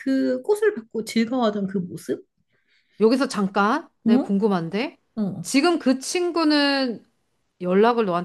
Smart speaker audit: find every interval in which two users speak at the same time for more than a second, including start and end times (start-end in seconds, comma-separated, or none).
none